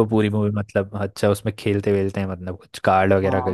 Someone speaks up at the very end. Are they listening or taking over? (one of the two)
taking over